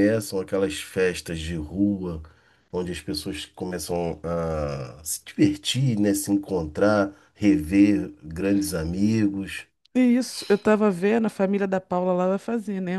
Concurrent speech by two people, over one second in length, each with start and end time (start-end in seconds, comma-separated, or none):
none